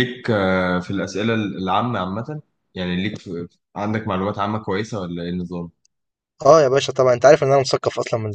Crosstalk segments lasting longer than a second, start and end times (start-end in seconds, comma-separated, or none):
none